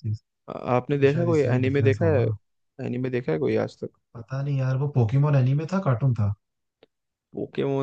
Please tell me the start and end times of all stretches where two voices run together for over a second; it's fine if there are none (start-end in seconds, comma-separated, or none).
1.0-2.2